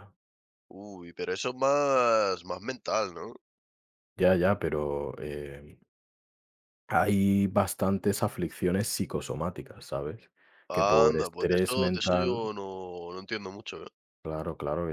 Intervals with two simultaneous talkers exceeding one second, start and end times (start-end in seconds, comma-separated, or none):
10.7-12.5